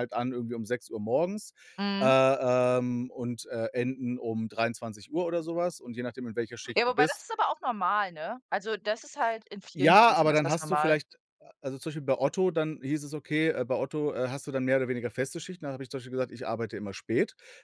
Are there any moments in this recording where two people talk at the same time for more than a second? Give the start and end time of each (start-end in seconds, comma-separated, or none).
9.8-11.0